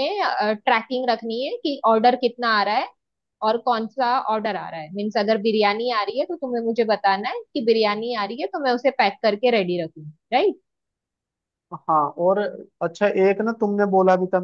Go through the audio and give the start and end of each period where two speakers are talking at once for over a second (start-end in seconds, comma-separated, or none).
none